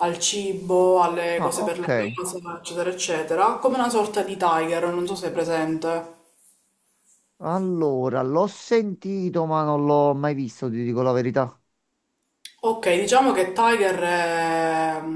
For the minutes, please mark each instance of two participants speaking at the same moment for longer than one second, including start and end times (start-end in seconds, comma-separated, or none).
none